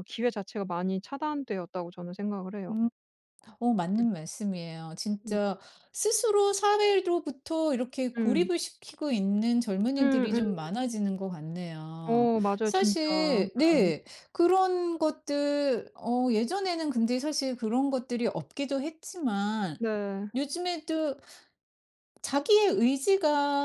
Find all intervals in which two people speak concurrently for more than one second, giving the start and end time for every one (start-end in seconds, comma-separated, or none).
12.0-13.5